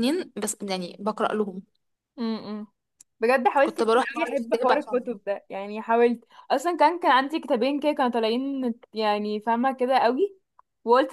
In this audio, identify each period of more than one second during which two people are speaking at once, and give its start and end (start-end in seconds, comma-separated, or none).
3.6-5.2